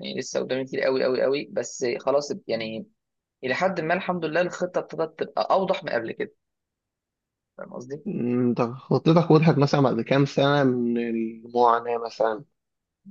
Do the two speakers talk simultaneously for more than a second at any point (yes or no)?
no